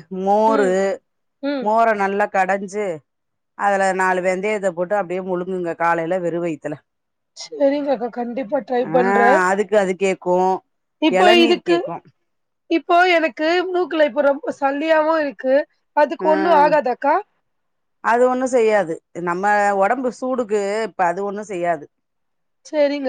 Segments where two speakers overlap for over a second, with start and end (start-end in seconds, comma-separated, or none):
none